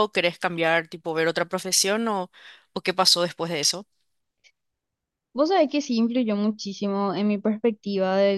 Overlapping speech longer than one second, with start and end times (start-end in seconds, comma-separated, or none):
none